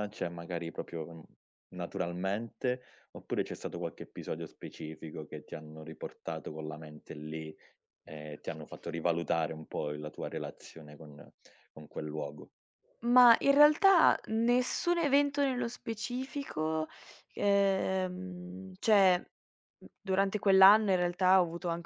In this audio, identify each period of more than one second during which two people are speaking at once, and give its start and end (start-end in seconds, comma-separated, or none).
none